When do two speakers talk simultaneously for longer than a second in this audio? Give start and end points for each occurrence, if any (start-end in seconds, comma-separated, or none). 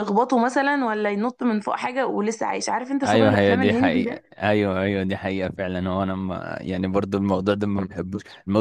3.0-4.4